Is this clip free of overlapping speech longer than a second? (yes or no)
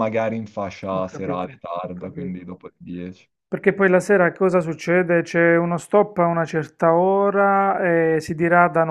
no